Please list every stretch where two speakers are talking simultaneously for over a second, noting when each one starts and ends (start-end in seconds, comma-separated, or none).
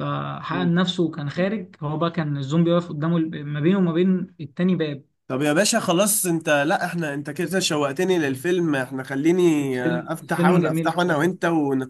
9.6-11.3